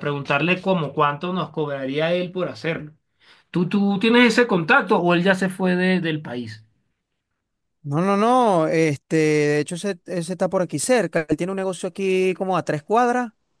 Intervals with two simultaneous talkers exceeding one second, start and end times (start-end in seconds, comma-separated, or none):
none